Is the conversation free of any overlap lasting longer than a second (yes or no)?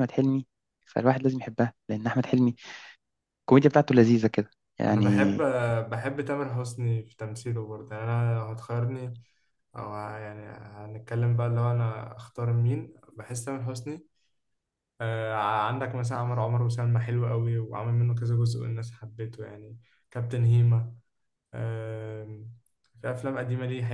yes